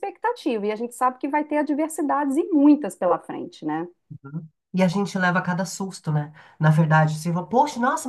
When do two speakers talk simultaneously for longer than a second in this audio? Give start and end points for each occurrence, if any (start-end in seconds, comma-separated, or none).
none